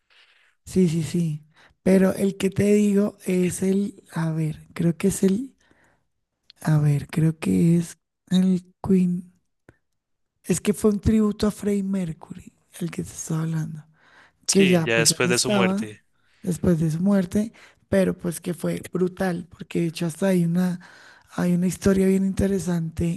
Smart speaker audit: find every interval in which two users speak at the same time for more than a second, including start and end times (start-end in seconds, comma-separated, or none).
14.5-16.0